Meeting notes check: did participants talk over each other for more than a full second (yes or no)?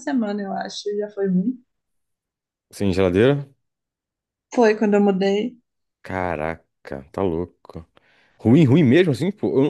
no